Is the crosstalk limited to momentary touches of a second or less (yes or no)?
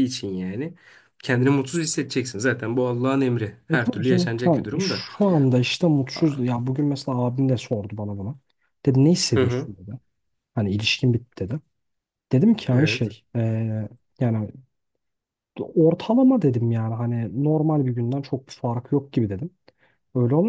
no